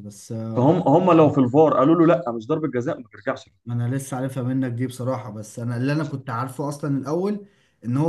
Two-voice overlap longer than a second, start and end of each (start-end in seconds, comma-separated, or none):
none